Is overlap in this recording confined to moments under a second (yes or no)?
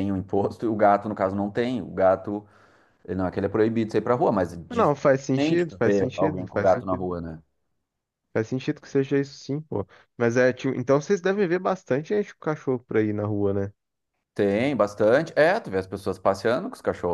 no